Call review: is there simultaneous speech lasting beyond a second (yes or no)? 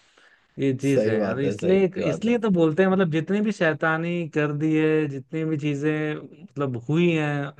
yes